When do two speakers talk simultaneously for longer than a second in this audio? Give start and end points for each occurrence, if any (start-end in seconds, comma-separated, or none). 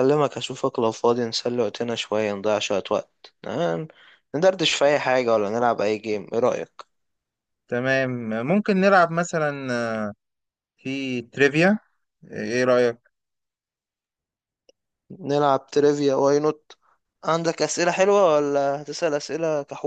none